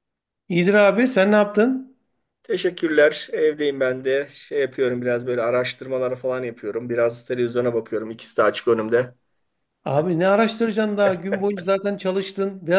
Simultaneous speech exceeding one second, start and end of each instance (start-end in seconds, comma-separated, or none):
none